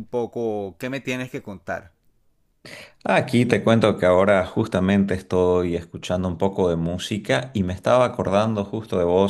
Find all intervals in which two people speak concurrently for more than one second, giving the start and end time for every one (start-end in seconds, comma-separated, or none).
none